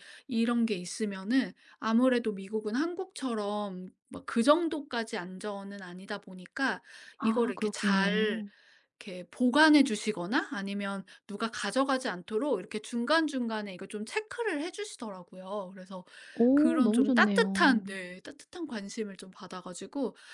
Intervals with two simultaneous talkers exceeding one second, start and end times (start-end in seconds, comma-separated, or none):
7.2-8.4, 16.5-17.8